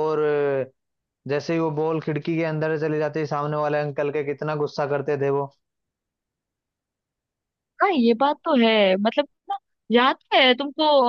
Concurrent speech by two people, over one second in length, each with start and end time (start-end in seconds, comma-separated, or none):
none